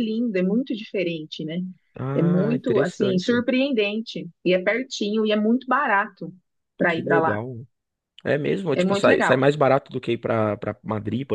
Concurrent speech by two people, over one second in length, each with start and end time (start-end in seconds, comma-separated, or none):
2.1-3.4